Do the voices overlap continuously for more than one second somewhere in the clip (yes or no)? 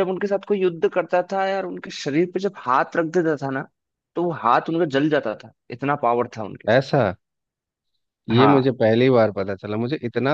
no